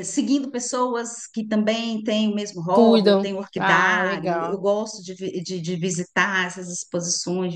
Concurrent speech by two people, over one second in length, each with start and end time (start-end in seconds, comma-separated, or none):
2.7-4.6